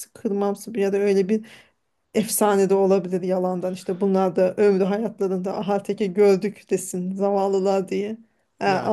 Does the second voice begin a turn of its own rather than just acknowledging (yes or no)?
no